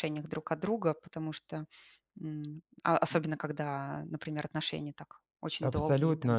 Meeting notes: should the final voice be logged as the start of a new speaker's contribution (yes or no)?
yes